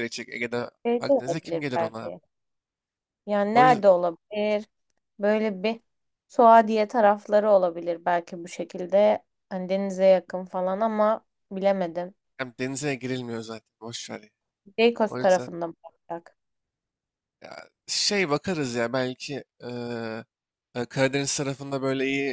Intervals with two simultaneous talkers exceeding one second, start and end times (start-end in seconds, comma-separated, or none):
0.9-2.1